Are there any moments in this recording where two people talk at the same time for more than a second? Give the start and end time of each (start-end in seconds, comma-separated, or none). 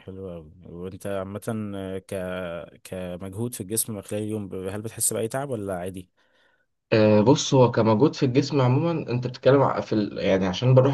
none